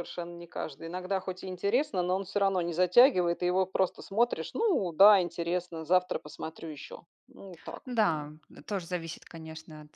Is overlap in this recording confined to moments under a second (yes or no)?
yes